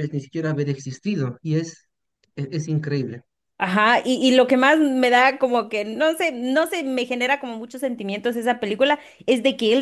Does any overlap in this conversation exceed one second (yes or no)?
no